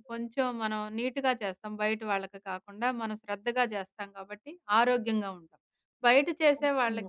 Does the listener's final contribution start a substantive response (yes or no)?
no